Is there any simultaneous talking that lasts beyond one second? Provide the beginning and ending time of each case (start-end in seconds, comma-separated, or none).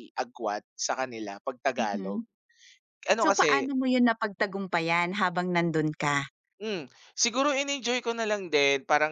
none